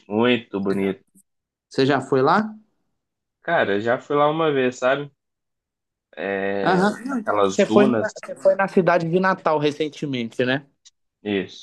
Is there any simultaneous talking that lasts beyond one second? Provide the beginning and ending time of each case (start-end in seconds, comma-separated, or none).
6.6-8.1